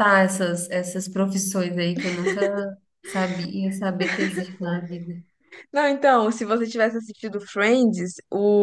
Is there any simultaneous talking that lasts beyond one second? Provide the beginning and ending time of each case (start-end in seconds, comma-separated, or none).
none